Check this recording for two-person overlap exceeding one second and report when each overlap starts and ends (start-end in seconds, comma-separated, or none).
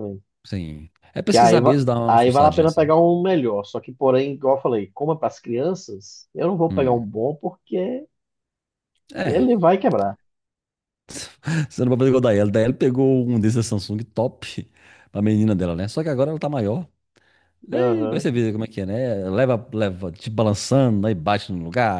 1.3-2.9